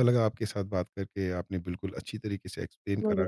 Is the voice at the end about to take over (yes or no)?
no